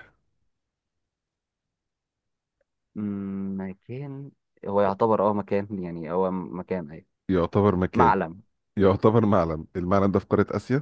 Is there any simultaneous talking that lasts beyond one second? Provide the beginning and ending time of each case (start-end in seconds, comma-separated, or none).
none